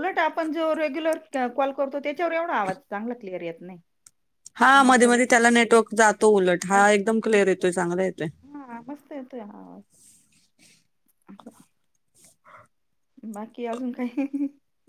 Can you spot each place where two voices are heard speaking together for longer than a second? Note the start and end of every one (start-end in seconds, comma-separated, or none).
none